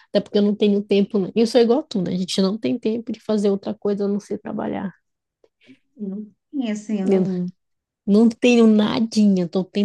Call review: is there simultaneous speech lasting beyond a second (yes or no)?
no